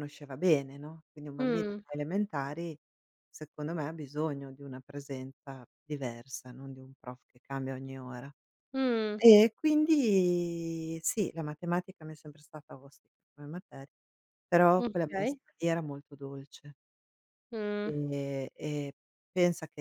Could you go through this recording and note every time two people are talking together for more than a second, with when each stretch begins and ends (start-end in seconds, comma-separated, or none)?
none